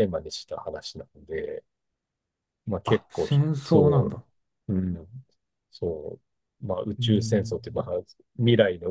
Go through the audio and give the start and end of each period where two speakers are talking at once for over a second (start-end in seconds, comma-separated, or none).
2.9-4.1